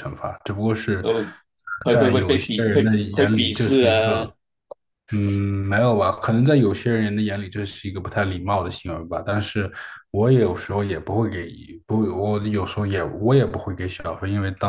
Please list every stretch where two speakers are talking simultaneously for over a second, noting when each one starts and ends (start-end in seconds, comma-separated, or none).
1.9-4.2